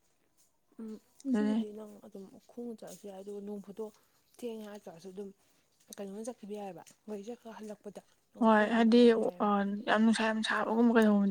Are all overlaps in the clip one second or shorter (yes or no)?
yes